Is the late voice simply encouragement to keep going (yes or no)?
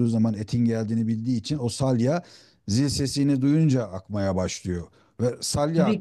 yes